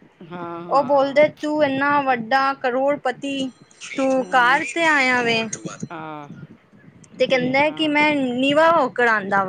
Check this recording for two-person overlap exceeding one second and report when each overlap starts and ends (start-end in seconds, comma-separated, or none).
none